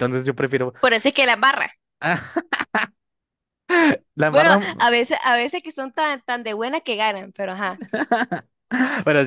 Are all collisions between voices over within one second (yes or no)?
yes